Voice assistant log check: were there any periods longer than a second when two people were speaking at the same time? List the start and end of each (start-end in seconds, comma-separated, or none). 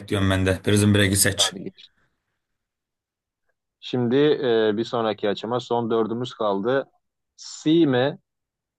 none